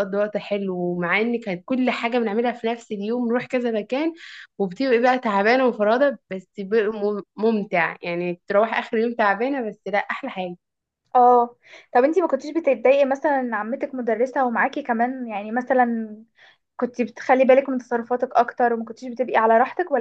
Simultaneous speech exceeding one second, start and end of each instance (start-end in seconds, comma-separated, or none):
none